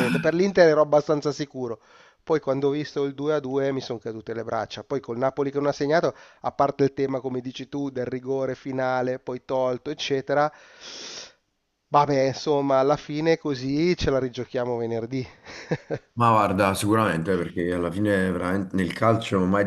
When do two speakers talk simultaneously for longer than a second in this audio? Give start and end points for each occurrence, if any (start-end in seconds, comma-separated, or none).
none